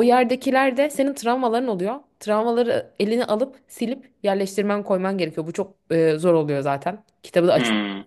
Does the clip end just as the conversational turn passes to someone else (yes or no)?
no